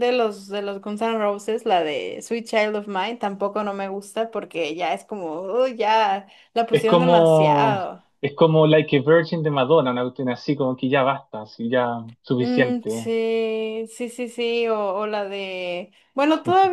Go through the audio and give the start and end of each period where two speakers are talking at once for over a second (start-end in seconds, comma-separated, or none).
6.7-8.0